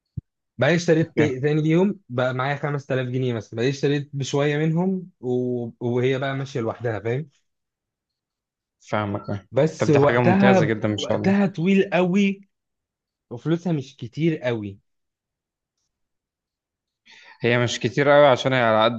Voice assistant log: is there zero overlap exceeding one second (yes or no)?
no